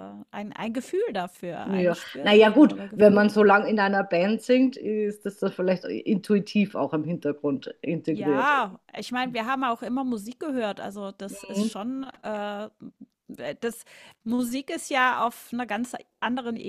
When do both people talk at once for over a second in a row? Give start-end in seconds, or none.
1.6-3.5